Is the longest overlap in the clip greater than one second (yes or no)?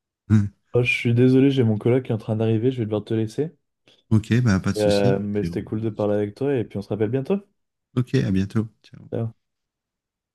yes